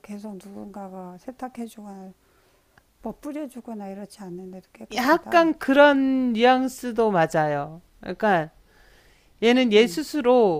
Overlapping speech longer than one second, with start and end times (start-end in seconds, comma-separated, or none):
none